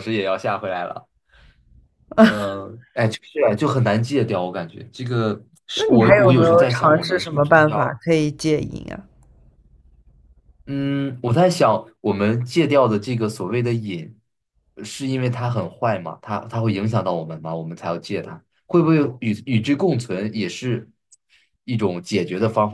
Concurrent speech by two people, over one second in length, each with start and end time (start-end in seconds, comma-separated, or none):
5.7-8.0